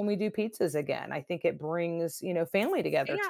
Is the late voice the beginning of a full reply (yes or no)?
yes